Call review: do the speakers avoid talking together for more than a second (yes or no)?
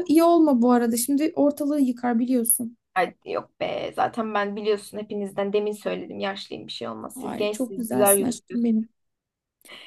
no